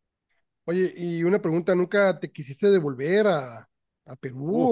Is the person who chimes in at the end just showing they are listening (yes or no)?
no